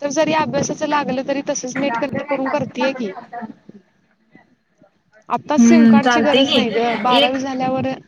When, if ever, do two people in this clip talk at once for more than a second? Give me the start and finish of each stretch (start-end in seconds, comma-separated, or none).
5.6-7.4